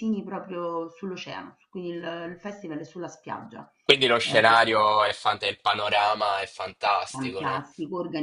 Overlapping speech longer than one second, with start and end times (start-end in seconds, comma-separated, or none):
none